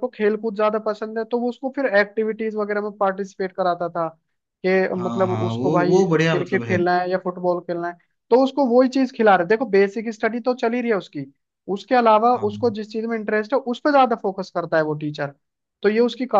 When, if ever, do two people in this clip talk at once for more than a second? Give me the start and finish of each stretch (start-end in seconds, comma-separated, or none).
5.0-6.8